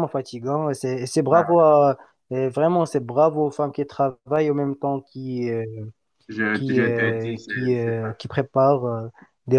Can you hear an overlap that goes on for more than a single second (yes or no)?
yes